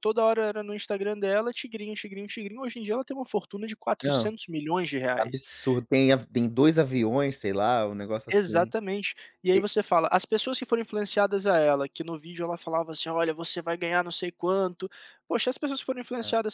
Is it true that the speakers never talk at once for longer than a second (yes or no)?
yes